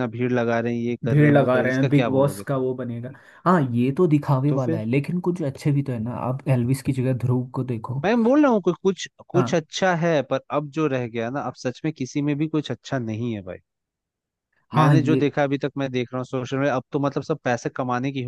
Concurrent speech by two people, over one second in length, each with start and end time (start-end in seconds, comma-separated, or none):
1.1-2.6